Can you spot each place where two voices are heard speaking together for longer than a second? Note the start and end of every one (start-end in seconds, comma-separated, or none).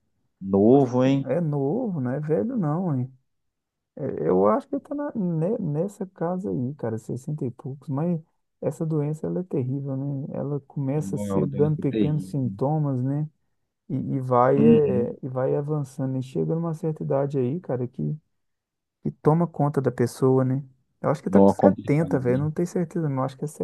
10.9-12.6, 21.3-22.5